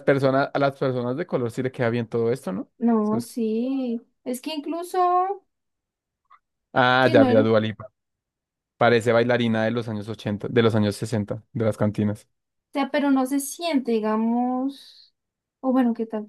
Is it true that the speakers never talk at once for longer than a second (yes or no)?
yes